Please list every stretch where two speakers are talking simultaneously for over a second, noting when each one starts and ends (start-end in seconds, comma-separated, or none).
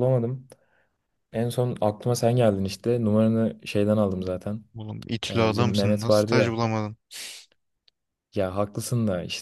5.3-6.6